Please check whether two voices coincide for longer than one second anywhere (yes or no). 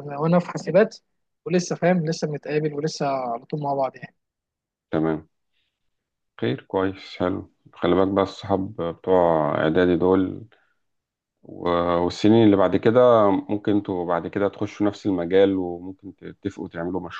no